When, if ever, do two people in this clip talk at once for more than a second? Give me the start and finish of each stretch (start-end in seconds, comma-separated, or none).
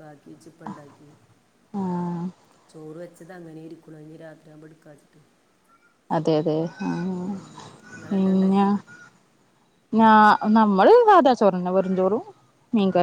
none